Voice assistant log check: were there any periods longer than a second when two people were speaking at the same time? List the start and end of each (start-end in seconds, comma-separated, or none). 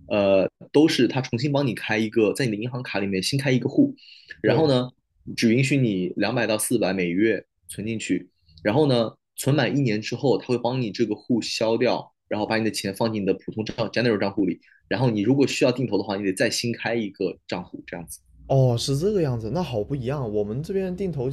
none